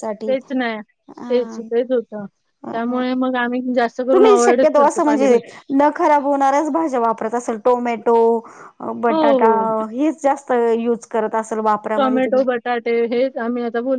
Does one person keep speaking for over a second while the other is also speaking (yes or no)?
yes